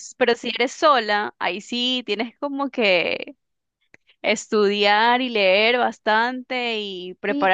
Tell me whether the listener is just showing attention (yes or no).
no